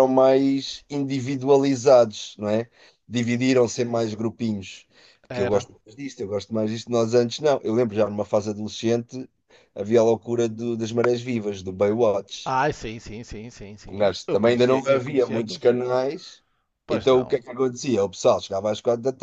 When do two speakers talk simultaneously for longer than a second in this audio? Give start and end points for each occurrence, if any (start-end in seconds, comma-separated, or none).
13.9-15.8